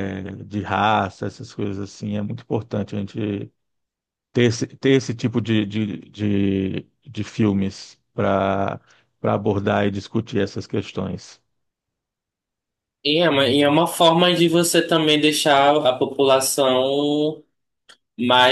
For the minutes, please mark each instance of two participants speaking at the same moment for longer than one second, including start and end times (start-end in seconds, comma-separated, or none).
none